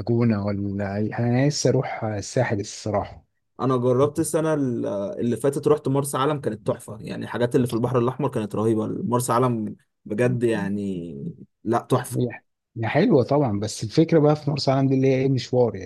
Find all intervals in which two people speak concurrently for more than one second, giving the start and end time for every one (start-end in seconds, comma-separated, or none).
none